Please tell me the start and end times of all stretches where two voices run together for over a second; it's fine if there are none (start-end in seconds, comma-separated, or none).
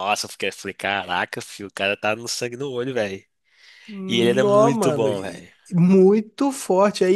4.1-5.5